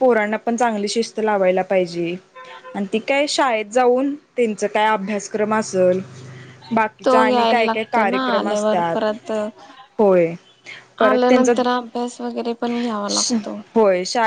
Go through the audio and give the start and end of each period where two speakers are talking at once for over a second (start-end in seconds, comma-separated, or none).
7.0-9.0